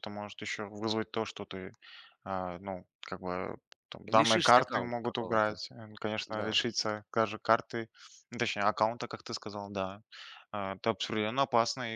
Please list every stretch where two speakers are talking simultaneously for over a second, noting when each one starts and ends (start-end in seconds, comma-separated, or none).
4.1-5.6